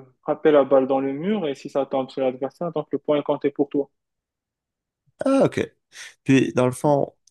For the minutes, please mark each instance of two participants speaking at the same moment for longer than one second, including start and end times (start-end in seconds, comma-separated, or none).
none